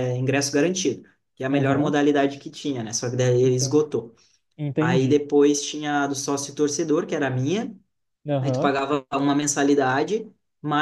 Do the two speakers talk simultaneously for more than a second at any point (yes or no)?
no